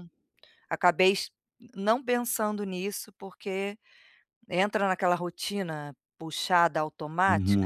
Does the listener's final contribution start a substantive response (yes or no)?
yes